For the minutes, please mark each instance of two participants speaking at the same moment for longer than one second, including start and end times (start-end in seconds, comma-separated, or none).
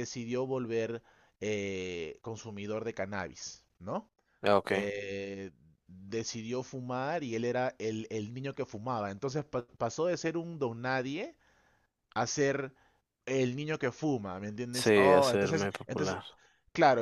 14.7-16.2